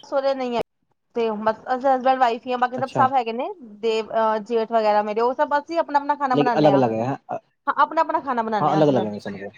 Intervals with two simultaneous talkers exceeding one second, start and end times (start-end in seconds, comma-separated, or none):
none